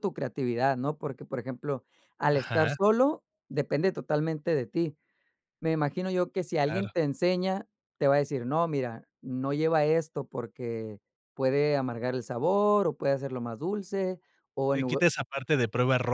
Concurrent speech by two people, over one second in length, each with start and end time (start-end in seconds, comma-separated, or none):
none